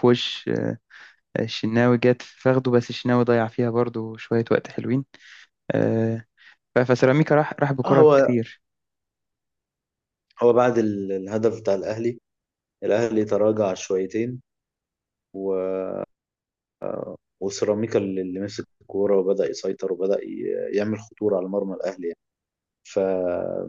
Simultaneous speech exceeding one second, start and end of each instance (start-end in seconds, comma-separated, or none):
none